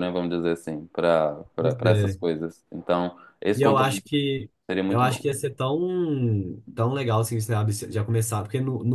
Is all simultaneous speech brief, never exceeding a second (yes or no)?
yes